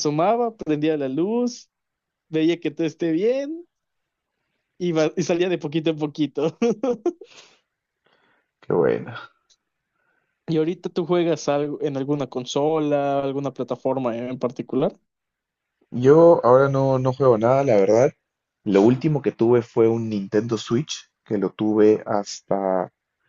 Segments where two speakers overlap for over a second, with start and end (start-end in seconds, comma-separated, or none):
none